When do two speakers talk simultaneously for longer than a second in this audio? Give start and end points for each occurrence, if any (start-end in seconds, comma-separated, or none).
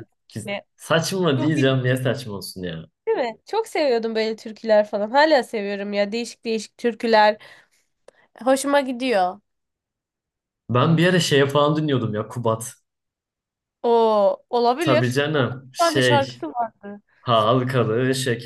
14.8-16.5